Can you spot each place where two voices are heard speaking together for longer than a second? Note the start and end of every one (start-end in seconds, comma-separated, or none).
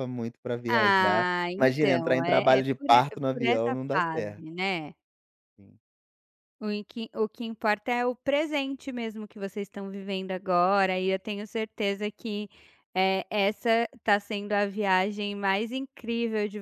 0.7-4.4